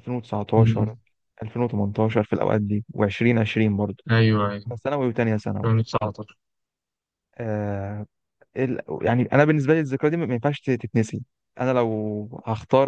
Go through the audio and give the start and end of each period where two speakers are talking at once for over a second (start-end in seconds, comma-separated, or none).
none